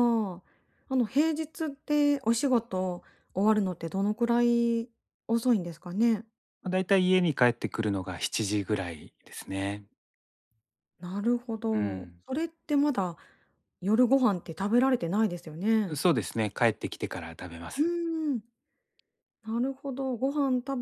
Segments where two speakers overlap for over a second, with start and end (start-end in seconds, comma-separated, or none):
none